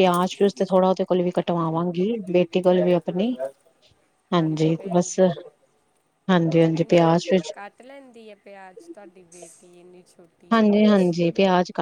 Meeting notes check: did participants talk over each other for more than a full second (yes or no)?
no